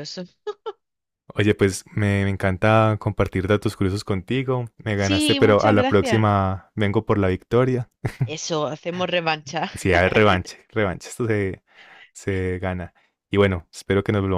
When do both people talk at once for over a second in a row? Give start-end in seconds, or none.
5.0-6.3